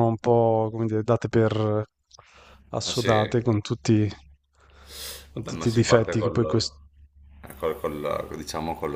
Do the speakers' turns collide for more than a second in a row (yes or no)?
yes